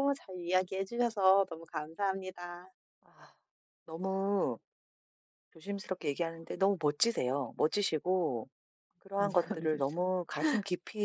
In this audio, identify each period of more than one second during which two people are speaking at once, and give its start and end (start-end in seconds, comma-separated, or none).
none